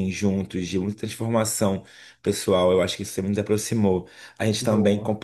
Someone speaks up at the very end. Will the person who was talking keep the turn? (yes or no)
yes